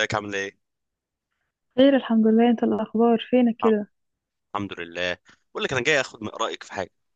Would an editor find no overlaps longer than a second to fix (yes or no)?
yes